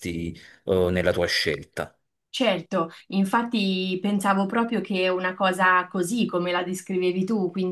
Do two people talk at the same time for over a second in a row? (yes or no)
no